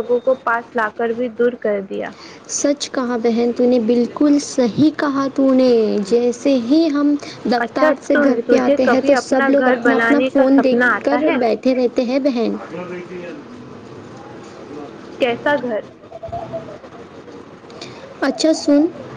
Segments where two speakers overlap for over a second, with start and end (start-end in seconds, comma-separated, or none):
7.6-11.4